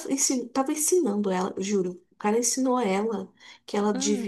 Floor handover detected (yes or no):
no